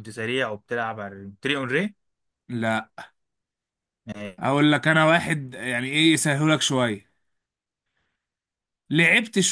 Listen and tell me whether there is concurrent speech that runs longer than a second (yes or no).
no